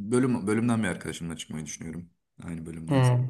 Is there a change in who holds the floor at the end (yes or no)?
yes